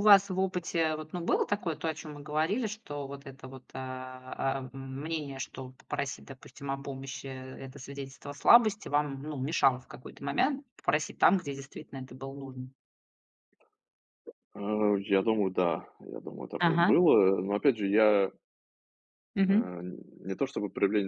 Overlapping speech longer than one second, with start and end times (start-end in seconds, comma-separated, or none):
none